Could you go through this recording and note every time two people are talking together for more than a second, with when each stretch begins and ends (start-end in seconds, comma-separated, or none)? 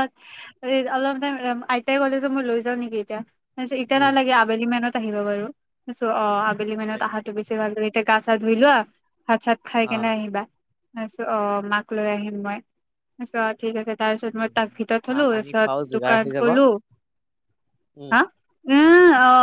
14.4-16.5